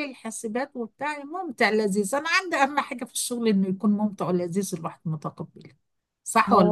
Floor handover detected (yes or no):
yes